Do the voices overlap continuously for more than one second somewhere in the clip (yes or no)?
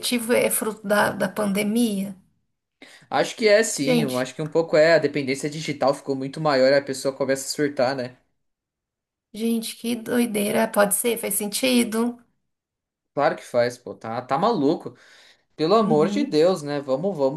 no